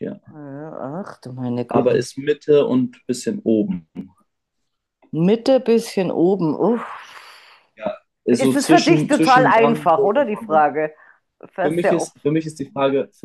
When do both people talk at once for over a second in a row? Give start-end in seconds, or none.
8.3-10.7